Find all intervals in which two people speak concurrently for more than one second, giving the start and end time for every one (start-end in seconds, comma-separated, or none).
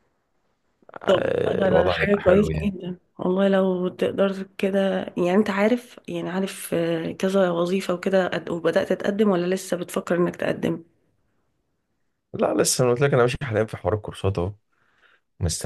1.1-2.7